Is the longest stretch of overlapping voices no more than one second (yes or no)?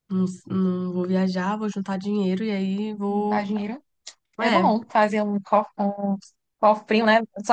yes